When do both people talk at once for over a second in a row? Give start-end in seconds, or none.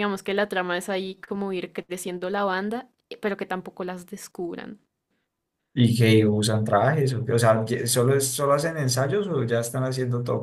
none